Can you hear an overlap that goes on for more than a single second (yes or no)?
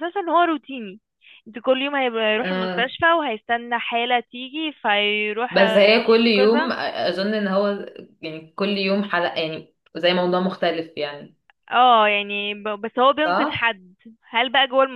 yes